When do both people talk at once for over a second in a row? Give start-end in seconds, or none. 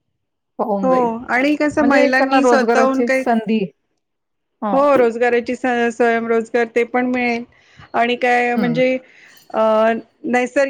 1.8-3.2